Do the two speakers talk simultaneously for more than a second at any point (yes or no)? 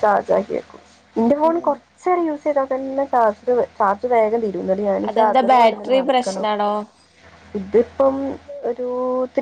yes